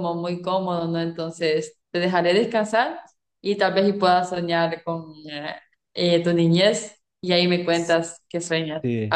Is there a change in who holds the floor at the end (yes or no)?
no